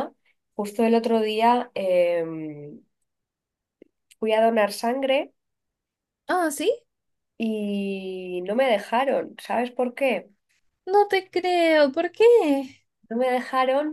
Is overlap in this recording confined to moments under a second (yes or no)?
yes